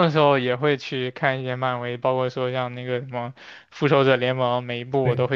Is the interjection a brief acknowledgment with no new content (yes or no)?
yes